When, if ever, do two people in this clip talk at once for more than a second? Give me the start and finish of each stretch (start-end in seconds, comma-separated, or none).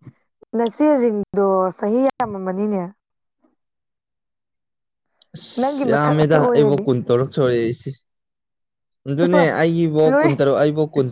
5.6-6.8